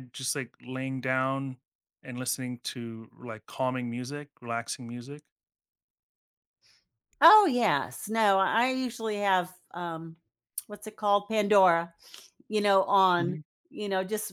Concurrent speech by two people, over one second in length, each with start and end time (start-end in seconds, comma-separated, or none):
none